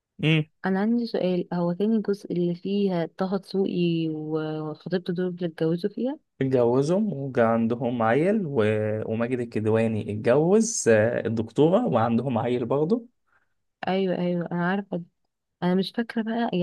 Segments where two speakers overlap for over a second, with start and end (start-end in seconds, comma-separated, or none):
none